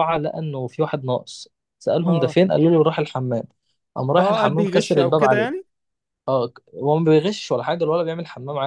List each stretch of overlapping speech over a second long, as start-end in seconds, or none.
4.2-5.6